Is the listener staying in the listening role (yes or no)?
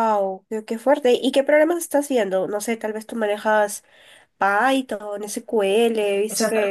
no